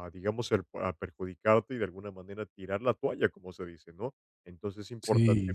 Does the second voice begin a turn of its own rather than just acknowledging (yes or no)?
no